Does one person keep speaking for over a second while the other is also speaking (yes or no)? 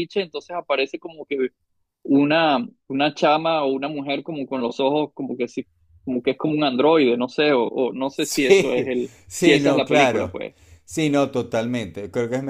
yes